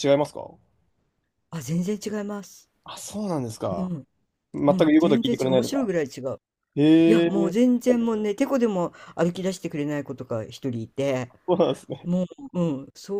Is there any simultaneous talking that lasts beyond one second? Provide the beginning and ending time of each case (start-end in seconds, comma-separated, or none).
4.7-5.9